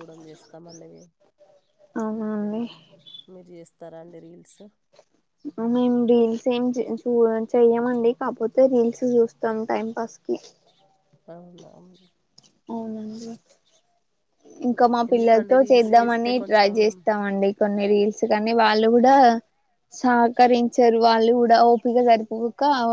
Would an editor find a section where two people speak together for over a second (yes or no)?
yes